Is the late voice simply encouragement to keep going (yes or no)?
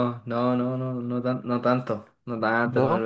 yes